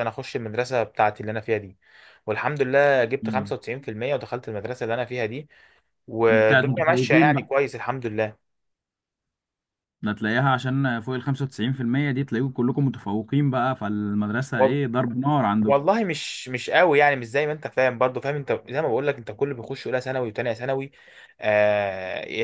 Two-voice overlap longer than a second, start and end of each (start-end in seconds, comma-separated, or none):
6.3-7.5